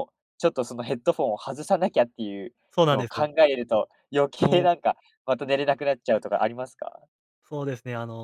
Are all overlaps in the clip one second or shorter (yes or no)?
yes